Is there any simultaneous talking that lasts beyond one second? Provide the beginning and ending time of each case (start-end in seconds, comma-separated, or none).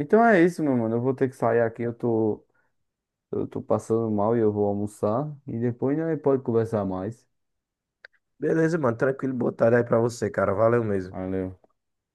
none